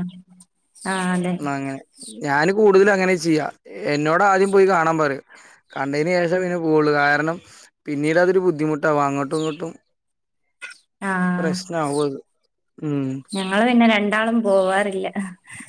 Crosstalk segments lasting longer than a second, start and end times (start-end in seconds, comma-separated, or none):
none